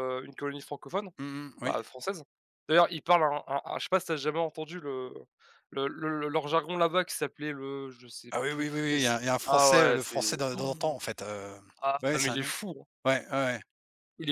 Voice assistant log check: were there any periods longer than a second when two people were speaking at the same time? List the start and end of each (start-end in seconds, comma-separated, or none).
8.3-11.0